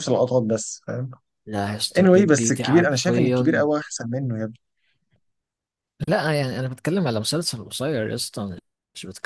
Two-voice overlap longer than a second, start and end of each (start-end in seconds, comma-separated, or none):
2.0-3.6